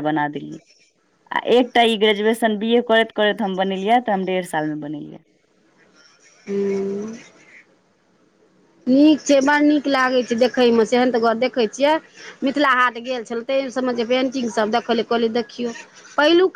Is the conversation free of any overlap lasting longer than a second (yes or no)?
yes